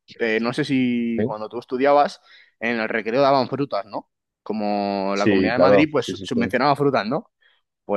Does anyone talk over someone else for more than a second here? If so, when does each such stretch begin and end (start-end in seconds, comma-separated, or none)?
5.1-6.5